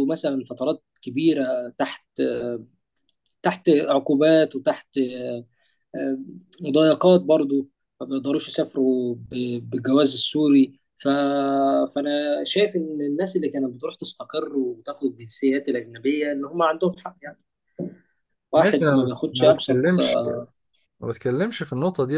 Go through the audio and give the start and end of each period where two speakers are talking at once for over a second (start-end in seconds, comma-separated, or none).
18.6-19.8